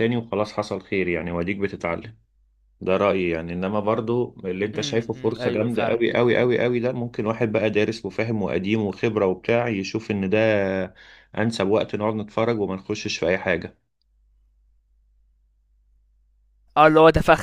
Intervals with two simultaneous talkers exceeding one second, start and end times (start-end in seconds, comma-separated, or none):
4.7-6.0